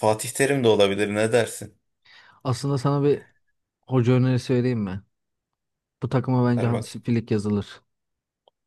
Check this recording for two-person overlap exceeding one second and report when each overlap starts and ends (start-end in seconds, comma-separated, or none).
none